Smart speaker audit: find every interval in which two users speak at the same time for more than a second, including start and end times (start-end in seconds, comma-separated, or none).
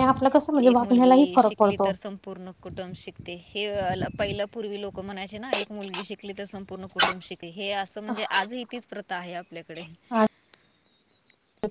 none